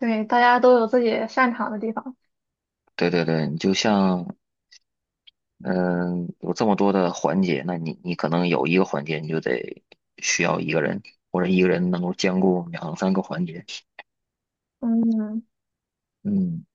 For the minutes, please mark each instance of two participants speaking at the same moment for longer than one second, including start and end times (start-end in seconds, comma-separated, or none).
none